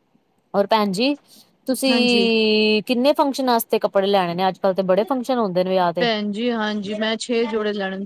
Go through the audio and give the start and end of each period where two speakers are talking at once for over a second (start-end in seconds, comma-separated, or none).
none